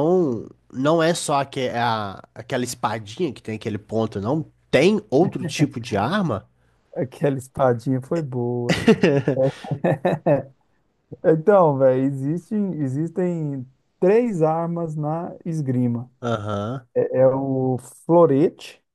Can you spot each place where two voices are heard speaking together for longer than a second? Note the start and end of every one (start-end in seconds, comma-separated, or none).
none